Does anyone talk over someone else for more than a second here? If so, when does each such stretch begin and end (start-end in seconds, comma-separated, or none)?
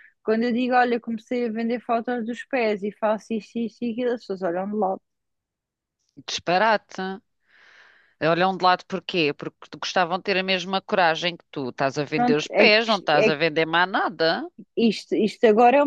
12.2-13.4